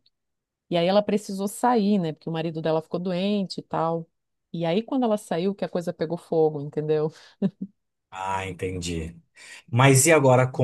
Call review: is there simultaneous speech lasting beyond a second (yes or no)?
no